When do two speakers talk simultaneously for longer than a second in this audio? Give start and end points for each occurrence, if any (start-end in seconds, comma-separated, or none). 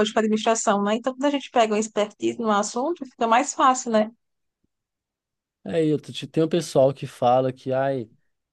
none